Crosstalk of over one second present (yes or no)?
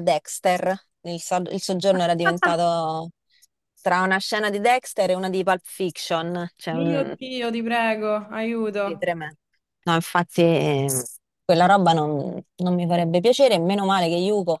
no